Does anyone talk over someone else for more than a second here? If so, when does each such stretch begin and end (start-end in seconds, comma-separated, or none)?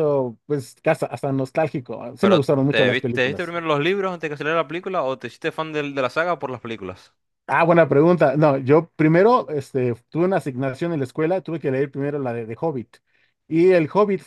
2.2-3.5